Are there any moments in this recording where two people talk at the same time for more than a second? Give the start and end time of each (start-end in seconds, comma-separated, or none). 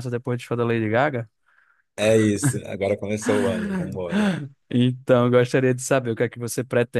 none